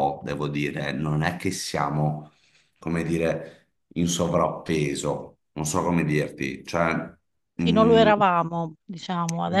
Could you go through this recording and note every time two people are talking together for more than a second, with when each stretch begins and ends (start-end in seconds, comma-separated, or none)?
none